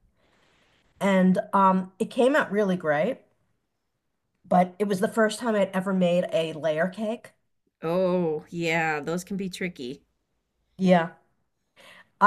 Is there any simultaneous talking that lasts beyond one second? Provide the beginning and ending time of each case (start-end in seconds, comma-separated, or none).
none